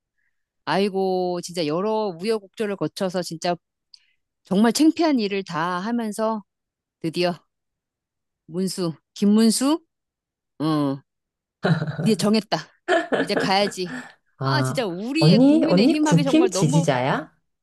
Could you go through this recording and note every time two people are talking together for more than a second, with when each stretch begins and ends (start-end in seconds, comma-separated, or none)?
14.4-16.8